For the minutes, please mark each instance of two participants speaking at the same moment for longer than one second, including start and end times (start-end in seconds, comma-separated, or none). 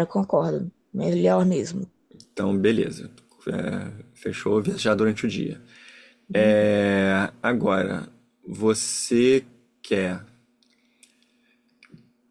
none